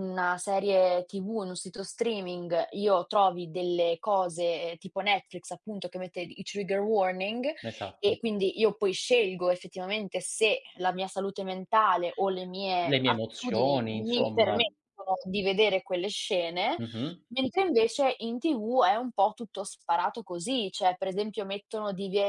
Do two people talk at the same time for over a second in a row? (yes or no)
yes